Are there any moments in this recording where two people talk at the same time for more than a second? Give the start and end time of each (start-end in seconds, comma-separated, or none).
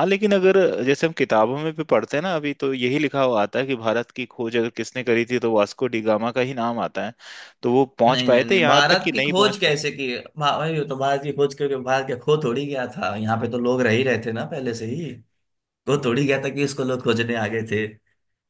8.1-9.8